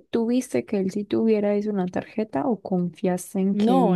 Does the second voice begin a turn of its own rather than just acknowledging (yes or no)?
yes